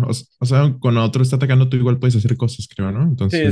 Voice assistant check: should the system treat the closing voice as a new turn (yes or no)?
yes